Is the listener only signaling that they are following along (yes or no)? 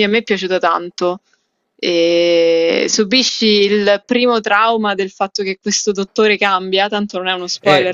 no